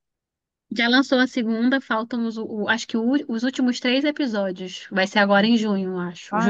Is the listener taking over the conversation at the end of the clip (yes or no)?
yes